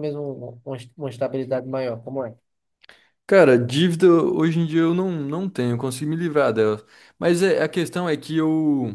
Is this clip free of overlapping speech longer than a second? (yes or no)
yes